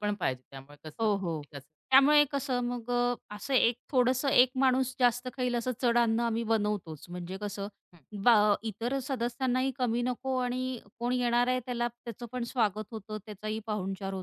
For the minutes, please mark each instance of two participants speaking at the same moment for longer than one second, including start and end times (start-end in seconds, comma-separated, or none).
none